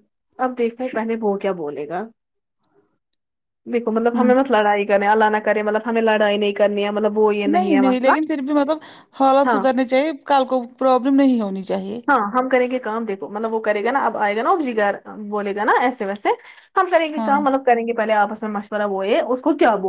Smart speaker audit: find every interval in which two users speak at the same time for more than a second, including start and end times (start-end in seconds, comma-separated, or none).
none